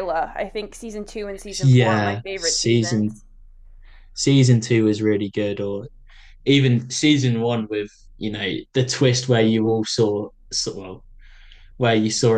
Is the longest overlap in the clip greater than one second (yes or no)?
yes